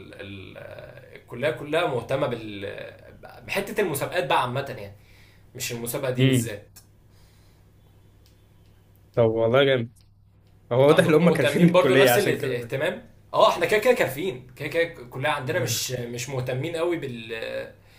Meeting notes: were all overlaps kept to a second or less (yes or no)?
no